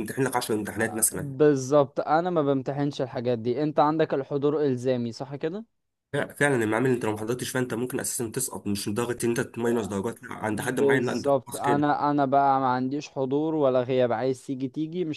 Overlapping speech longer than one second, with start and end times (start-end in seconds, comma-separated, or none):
10.5-11.9